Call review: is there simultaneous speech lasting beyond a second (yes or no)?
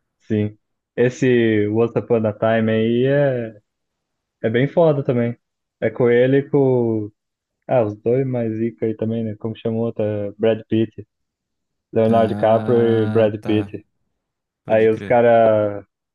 yes